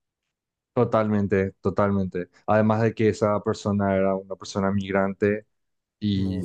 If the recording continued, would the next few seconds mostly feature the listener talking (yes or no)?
no